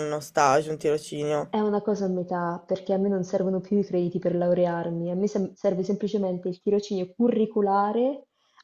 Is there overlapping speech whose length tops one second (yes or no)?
no